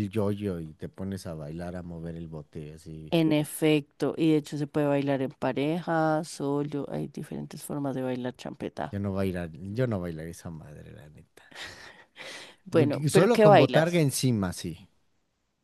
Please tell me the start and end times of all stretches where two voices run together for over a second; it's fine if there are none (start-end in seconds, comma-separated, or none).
12.7-14.0